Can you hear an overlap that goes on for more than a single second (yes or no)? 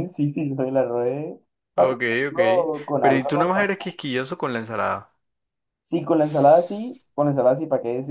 yes